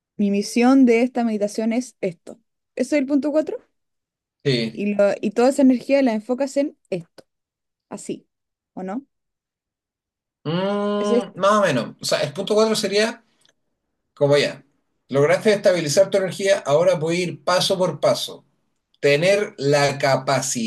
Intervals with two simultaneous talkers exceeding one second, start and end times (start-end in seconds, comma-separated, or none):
none